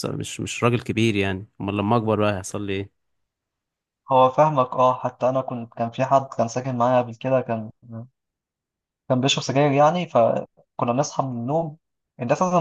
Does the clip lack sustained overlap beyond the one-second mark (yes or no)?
yes